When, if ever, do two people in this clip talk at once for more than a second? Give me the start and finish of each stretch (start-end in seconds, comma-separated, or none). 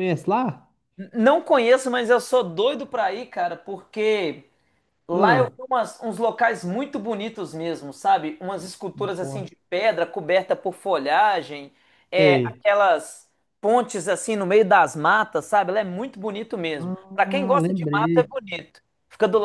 16.8-18.3